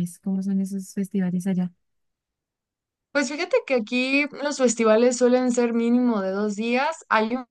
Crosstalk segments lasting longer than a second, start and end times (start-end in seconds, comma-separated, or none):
none